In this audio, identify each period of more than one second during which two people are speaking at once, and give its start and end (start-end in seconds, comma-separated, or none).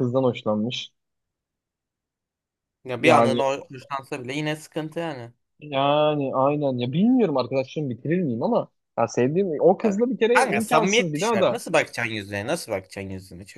10.3-11.6